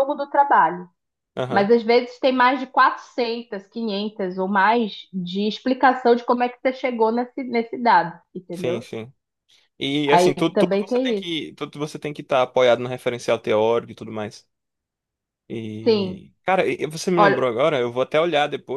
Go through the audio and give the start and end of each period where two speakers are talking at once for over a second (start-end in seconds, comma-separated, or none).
10.1-11.3